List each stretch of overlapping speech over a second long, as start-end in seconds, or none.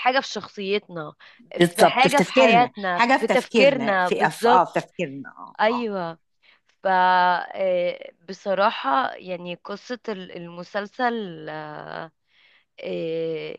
1.6-4.7